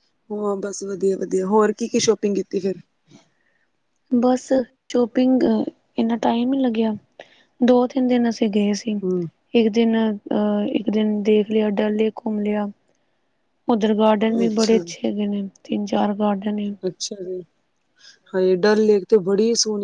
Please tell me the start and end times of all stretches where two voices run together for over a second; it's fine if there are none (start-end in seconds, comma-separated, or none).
none